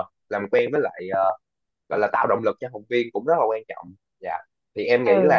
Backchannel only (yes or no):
no